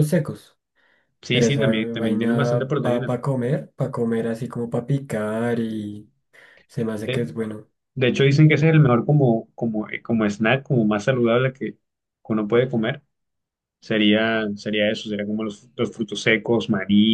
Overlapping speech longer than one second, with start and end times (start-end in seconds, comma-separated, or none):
1.3-3.1